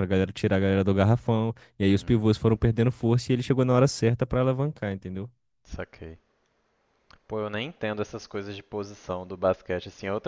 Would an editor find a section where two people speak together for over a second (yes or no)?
no